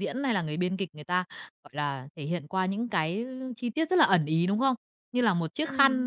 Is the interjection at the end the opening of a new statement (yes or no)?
no